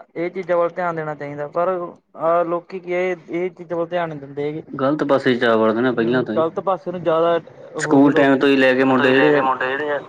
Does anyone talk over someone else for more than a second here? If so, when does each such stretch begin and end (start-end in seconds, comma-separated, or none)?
7.8-9.4